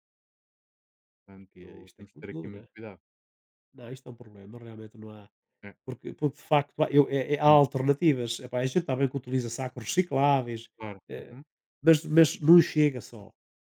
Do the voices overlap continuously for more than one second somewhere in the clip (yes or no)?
yes